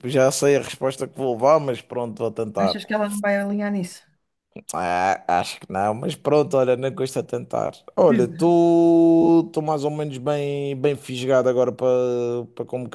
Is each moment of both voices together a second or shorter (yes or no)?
yes